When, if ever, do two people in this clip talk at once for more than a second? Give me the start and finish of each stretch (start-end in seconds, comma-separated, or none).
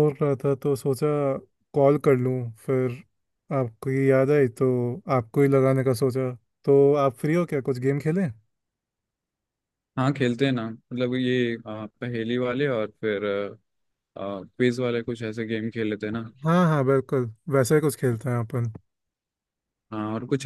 none